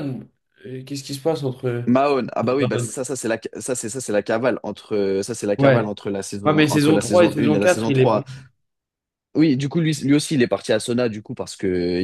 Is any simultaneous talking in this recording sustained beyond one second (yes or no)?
yes